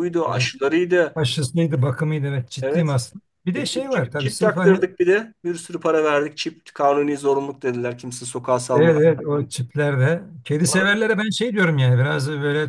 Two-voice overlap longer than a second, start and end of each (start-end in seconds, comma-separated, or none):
3.6-4.8